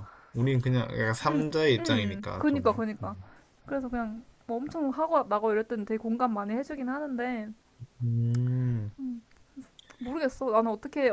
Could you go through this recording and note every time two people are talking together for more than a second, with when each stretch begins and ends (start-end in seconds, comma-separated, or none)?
1.8-3.1